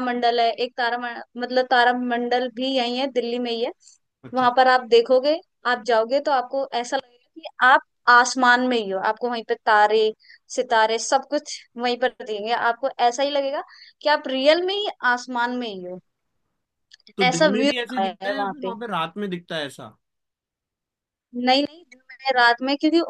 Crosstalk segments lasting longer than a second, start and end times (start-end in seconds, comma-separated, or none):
17.2-18.7